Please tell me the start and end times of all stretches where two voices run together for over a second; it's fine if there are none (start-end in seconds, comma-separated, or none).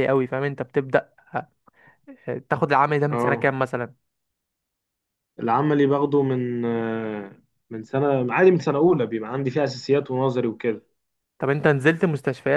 none